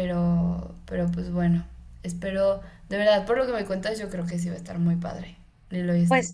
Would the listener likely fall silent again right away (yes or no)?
no